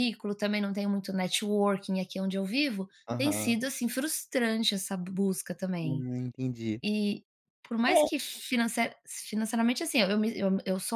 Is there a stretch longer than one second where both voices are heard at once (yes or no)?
no